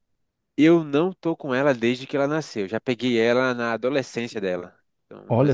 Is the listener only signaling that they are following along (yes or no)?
yes